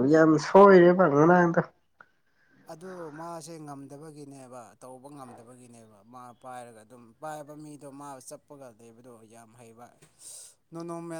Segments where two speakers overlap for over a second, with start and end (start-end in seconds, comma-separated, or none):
none